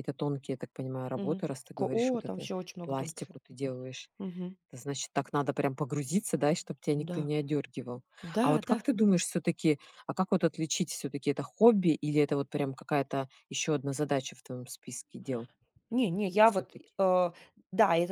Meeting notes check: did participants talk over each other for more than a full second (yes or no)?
yes